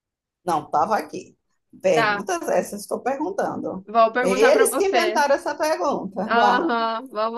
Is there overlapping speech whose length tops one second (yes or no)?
yes